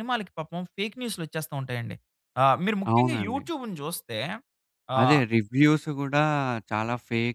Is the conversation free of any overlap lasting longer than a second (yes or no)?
yes